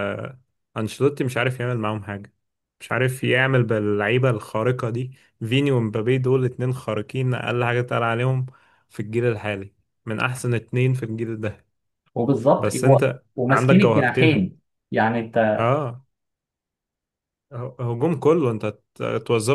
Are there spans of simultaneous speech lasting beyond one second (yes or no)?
yes